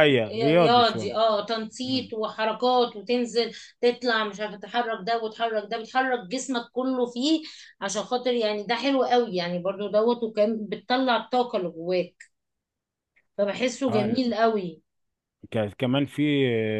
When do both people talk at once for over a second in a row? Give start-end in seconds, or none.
none